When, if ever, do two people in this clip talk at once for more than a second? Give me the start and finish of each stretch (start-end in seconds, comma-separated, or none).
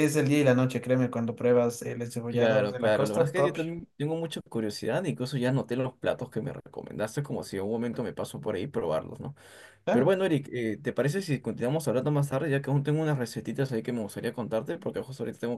2.3-3.6